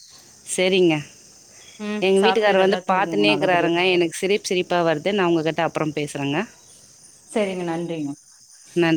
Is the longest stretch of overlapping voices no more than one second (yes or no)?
no